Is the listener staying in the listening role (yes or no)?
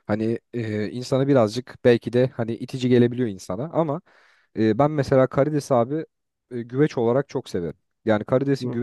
yes